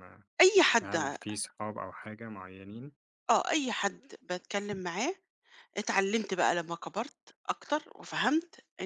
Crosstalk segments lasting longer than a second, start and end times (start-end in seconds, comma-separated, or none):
none